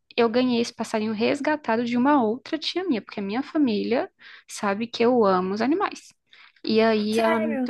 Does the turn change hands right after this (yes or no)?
no